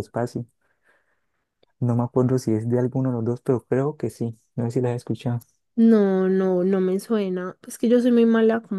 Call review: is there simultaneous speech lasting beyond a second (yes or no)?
no